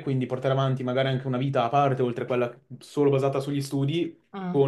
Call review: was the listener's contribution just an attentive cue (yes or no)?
yes